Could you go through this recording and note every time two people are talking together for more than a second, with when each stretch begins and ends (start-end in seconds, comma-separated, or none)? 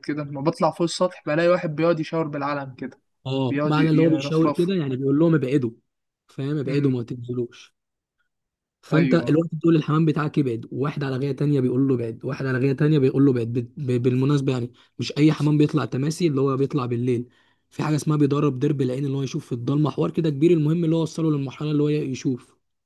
3.5-4.7